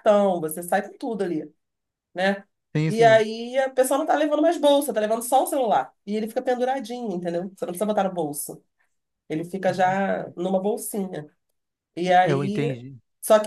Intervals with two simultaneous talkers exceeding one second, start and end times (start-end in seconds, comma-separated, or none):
none